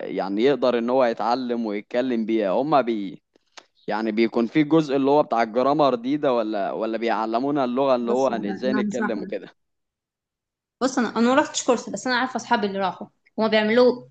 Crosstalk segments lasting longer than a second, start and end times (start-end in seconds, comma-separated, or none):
8.0-9.3